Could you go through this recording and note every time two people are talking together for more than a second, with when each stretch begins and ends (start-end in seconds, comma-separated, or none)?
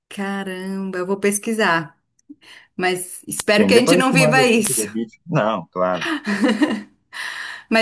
3.5-4.9